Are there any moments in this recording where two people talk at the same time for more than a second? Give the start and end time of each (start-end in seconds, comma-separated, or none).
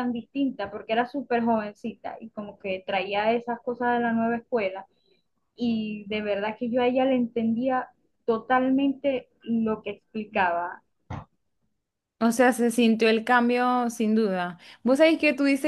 none